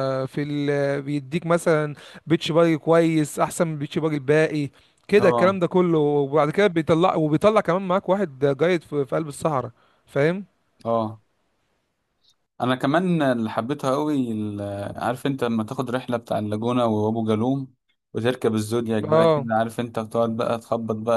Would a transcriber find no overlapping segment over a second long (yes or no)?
yes